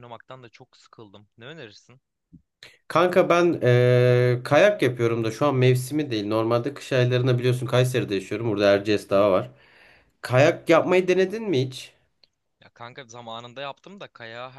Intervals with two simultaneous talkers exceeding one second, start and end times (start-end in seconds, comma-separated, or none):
none